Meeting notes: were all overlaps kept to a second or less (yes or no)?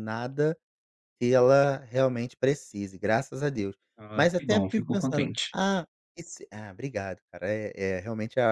no